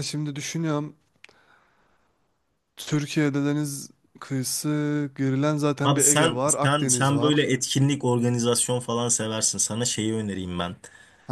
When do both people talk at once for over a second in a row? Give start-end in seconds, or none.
5.8-7.5